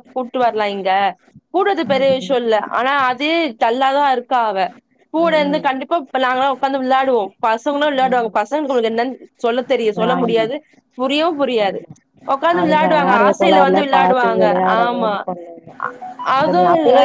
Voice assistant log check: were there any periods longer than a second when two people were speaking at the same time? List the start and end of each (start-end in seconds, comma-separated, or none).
12.6-15.1